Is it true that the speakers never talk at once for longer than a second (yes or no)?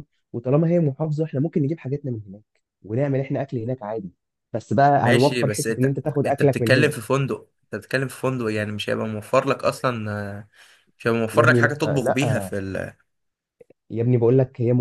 no